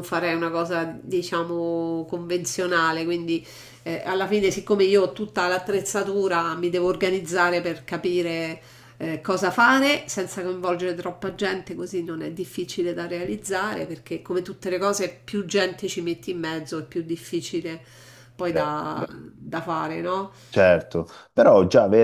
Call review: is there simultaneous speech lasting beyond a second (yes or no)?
no